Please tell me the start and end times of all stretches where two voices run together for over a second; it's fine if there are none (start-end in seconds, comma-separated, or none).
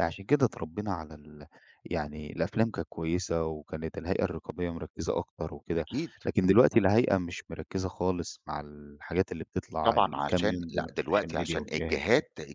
9.8-12.0